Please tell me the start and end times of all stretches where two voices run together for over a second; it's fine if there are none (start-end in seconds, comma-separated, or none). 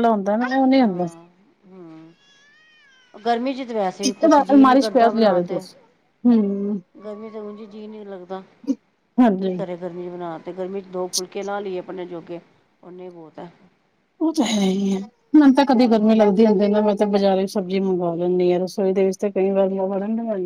4.1-5.6